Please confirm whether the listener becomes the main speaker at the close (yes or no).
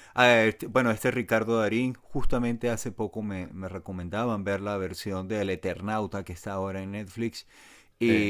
no